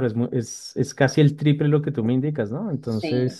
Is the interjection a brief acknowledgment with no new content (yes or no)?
no